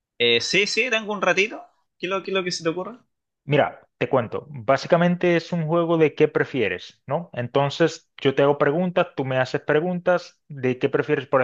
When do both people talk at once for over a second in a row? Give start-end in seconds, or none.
none